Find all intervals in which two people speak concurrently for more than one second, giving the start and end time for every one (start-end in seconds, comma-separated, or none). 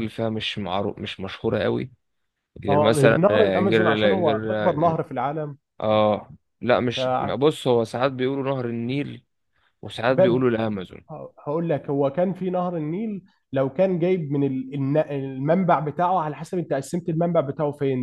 2.7-5.0